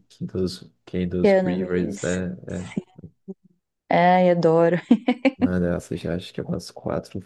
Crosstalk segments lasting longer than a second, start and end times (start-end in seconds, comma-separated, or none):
1.2-2.8